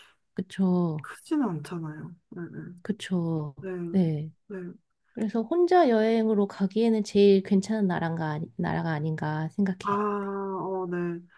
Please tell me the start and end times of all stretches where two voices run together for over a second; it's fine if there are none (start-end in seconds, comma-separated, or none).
none